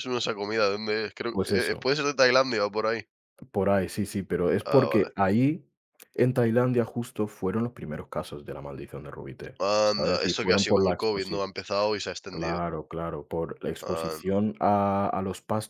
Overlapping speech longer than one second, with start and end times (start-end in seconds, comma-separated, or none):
9.6-11.4